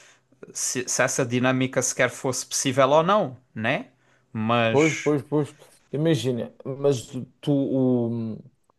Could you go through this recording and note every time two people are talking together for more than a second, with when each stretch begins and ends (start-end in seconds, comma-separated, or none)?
none